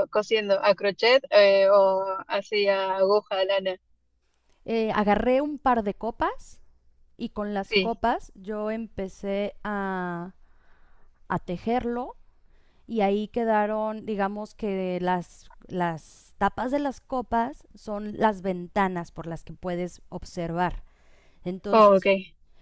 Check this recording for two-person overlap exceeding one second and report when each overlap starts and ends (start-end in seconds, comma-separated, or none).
none